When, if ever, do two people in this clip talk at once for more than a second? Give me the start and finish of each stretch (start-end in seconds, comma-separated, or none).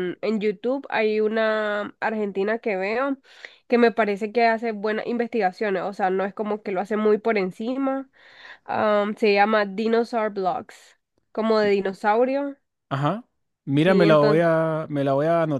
none